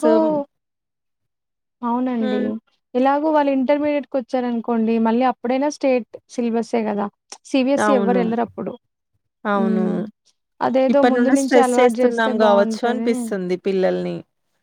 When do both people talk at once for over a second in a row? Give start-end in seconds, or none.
10.9-13.1